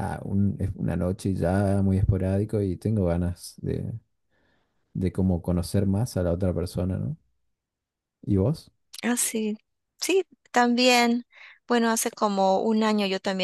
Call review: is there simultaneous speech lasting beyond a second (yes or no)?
no